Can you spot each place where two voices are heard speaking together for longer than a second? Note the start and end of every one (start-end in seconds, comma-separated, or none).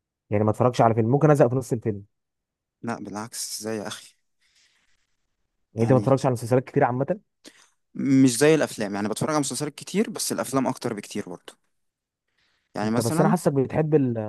none